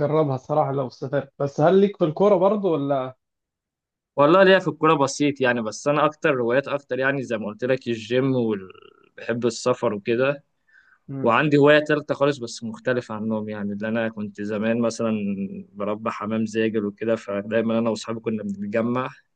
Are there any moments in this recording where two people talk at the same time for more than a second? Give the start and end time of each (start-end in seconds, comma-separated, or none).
none